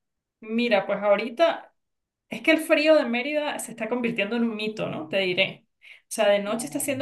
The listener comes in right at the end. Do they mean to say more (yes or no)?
no